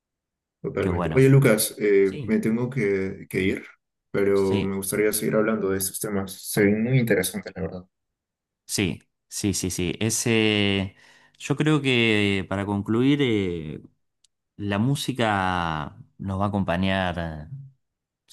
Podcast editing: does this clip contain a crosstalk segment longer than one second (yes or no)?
no